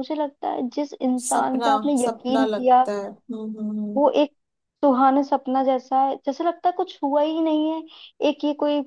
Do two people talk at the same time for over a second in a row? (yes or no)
yes